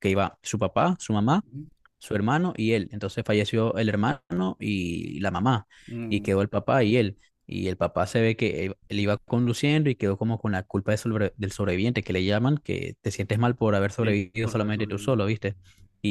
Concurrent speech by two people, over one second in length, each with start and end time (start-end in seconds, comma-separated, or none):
14.0-15.2